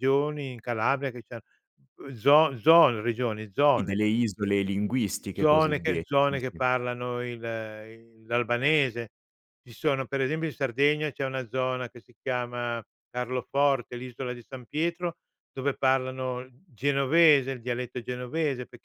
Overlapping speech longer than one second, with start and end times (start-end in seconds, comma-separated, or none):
5.3-6.7